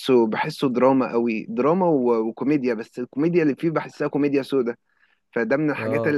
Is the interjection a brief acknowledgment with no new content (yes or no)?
yes